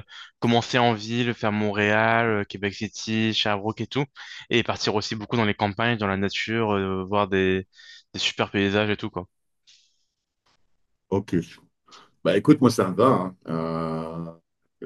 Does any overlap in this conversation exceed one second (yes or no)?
no